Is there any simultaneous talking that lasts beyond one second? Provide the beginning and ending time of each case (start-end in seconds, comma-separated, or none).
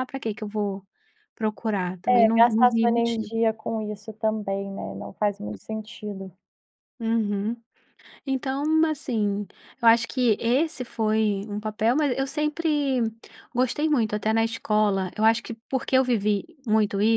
2.1-3.3